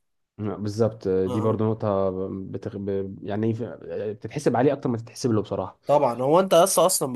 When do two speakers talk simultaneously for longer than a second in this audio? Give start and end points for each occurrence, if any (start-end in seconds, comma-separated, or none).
none